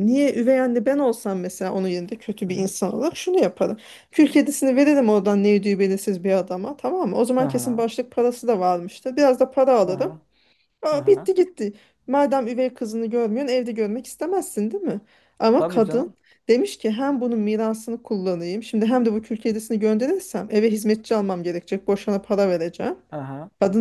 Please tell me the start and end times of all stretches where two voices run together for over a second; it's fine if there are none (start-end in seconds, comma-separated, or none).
none